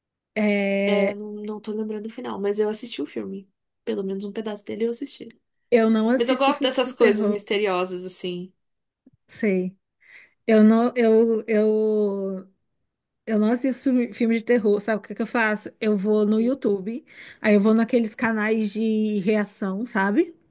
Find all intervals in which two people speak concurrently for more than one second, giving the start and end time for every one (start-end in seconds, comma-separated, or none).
6.2-7.4